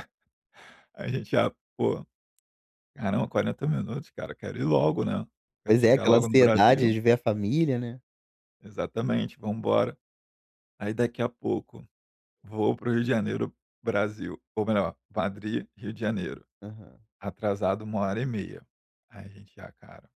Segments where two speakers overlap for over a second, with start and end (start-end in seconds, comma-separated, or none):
5.7-6.9